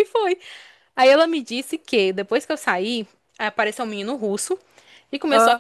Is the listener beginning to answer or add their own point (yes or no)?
no